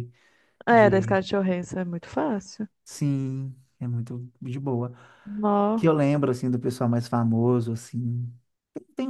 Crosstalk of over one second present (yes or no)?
no